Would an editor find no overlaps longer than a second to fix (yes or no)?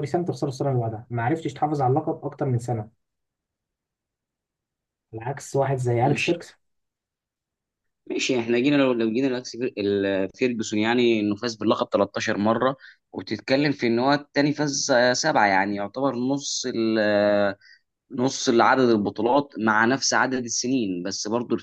yes